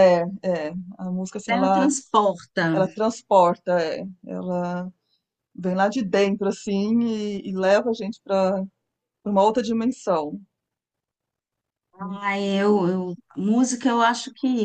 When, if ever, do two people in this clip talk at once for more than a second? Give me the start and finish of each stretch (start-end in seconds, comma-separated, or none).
none